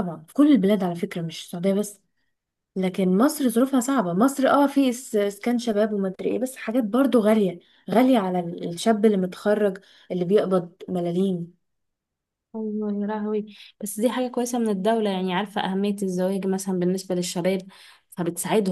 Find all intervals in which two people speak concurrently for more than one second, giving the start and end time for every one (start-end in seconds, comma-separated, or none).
none